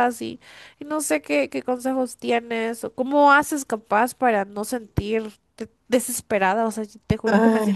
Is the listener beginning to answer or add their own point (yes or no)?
no